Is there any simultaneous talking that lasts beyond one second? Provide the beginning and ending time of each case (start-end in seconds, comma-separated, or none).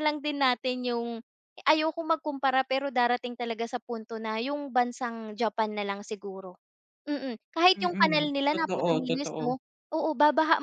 7.8-9.4